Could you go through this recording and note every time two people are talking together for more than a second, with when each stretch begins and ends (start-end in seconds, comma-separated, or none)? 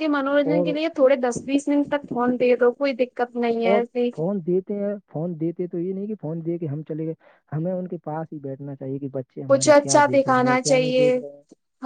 9.5-11.1